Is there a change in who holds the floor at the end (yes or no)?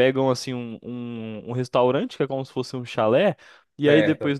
no